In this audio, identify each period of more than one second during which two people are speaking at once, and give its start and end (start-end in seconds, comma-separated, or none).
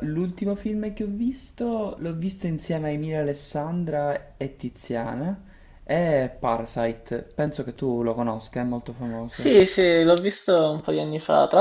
none